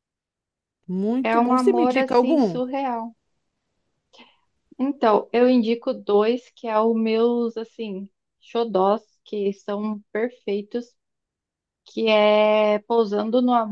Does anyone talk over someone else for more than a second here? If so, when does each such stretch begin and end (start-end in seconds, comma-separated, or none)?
1.2-2.6